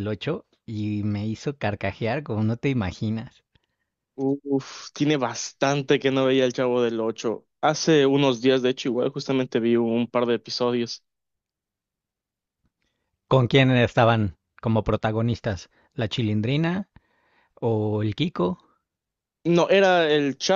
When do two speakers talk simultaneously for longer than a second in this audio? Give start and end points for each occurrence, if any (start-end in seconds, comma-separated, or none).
none